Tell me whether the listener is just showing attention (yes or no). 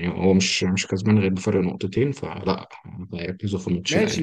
no